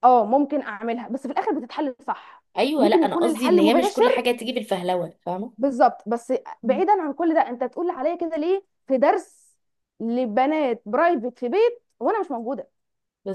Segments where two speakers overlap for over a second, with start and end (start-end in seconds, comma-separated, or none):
2.6-4.3